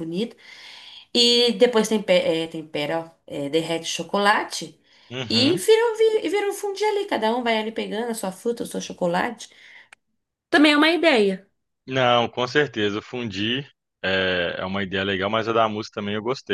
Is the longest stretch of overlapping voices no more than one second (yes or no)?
yes